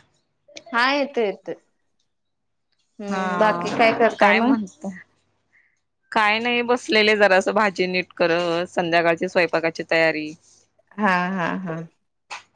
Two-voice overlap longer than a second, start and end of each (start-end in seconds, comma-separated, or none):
3.1-4.5